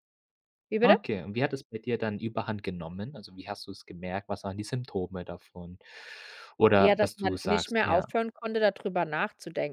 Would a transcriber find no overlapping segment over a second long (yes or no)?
no